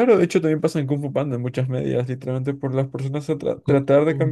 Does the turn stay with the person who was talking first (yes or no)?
yes